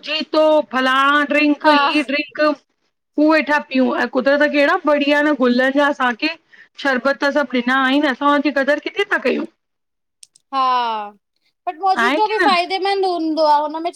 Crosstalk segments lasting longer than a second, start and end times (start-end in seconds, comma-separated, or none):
none